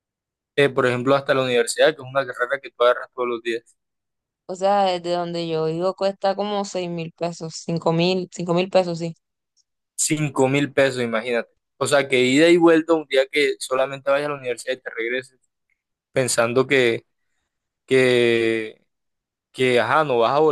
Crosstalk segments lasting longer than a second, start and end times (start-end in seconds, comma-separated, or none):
none